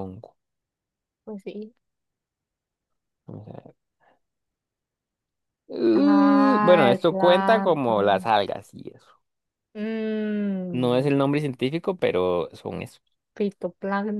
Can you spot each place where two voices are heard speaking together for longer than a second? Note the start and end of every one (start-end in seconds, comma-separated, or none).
5.9-8.3